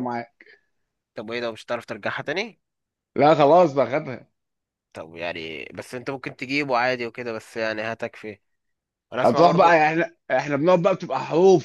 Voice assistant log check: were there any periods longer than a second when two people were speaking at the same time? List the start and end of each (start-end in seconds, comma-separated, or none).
none